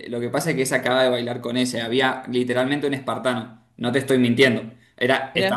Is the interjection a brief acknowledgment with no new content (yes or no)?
yes